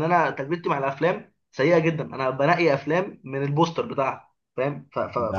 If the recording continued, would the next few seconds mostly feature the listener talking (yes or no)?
yes